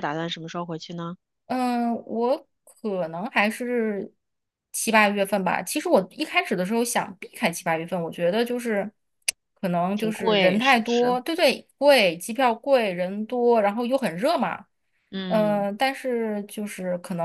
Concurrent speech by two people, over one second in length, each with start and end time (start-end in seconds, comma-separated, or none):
9.9-11.2